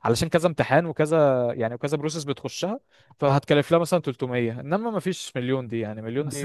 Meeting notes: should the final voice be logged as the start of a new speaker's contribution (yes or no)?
yes